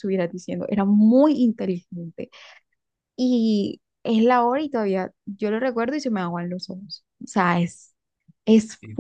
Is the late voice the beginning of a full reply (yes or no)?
yes